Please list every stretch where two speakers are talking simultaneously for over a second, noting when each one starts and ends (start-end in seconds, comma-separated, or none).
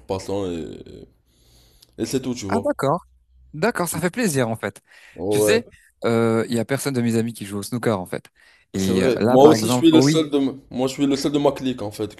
8.7-10.3